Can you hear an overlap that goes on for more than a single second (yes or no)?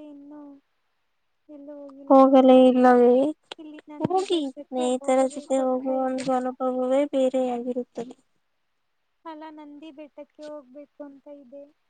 yes